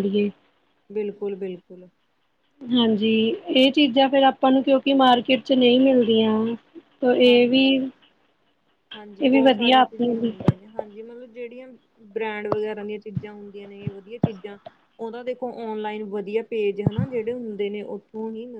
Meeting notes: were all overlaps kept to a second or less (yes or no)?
no